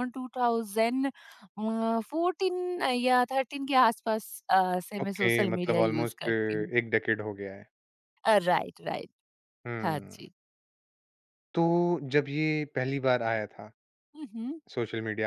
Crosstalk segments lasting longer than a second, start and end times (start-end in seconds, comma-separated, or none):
5.0-6.7